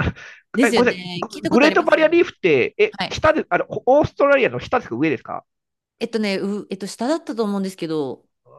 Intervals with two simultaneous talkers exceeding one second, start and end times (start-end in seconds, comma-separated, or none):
0.7-2.3